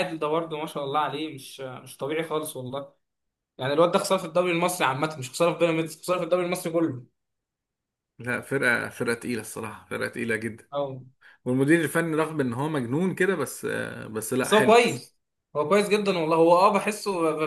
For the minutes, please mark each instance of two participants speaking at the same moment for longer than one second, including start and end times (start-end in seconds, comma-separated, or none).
none